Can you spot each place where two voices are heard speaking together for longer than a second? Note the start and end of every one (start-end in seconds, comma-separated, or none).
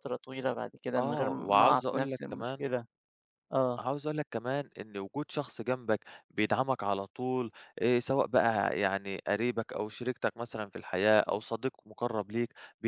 1.0-2.6